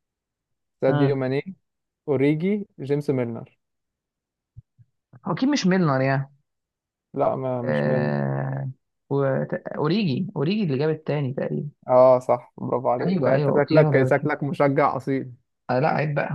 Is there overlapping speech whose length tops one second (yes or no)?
yes